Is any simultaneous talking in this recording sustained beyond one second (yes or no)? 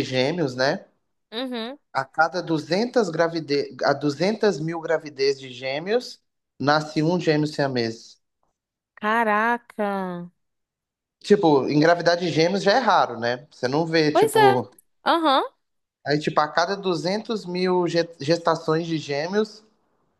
no